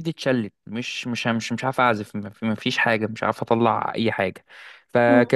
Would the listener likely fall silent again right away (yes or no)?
yes